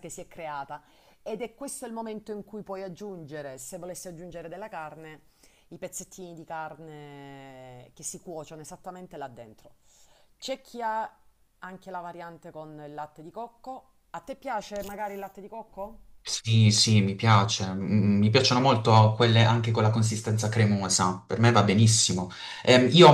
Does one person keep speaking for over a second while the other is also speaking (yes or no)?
no